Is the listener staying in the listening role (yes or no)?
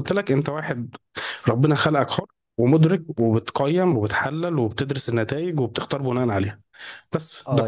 no